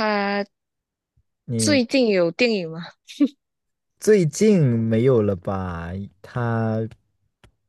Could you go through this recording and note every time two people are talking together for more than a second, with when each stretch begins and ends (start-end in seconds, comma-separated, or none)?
none